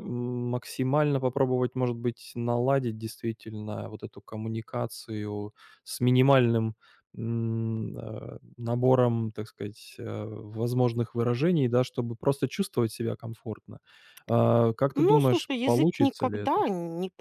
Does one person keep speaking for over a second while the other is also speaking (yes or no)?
yes